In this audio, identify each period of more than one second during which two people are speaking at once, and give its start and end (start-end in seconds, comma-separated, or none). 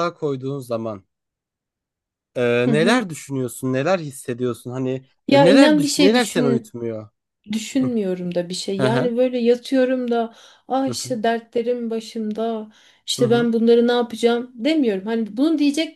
5.3-6.7